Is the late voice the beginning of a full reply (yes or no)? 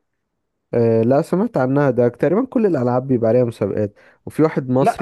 no